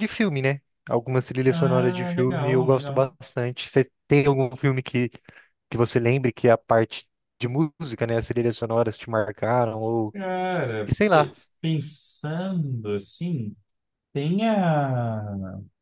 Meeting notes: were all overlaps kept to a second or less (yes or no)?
no